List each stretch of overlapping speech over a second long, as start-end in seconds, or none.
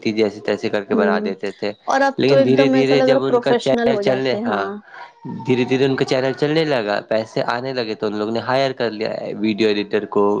2.2-4.4